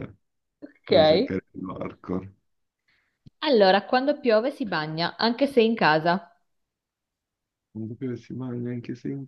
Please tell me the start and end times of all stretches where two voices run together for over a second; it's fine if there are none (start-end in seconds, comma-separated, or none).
none